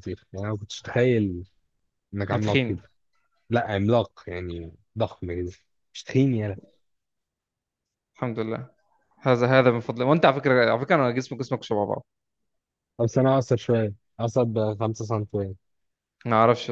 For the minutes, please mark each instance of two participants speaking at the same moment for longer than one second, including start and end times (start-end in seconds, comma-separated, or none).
none